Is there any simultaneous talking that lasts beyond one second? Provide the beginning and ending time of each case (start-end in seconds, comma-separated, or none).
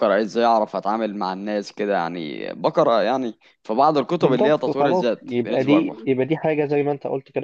4.2-6.0